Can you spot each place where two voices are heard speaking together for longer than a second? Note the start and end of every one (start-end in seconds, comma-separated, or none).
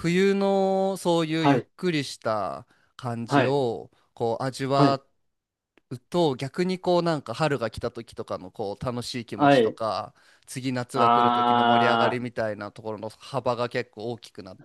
10.9-12.2